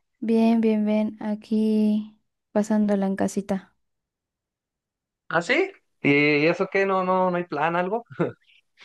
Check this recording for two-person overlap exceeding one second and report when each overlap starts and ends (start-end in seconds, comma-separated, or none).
none